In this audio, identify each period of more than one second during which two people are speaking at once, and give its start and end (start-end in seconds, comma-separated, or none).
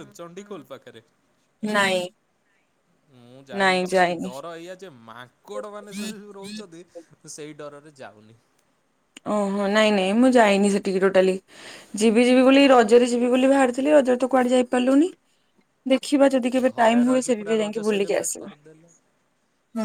16.6-18.5